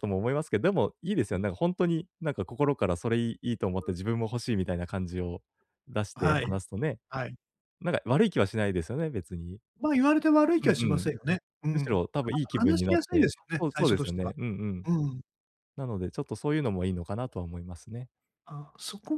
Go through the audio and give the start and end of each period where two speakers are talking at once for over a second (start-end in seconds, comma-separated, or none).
11.7-14.3